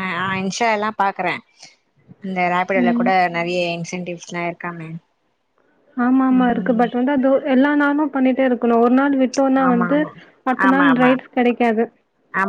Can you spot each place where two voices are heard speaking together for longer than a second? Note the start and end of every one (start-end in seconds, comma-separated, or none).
none